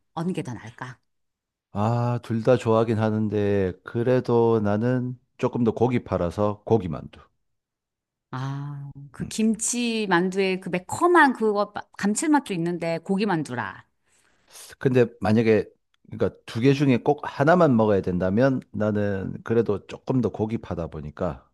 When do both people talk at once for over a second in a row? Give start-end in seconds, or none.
none